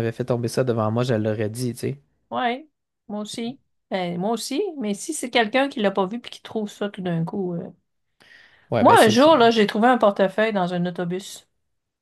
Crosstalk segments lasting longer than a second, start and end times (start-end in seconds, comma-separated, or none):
none